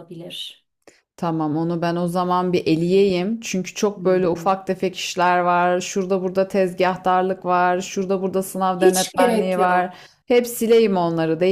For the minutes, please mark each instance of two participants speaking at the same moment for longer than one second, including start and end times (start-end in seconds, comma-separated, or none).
8.8-10.0